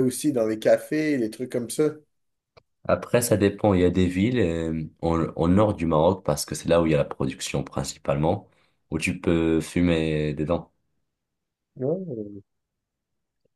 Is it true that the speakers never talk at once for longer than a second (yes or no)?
yes